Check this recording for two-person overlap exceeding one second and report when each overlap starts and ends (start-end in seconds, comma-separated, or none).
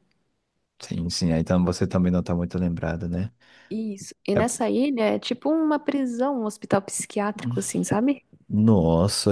none